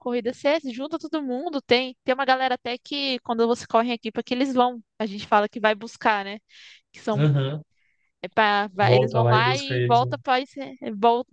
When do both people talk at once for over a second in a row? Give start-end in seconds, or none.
8.8-10.2